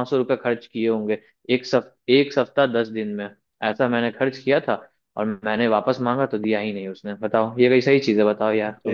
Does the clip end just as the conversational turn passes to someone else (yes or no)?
yes